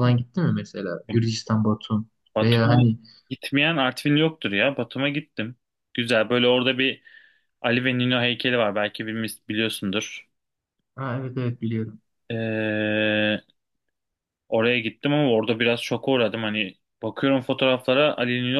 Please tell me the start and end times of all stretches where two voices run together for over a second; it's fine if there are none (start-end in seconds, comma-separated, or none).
none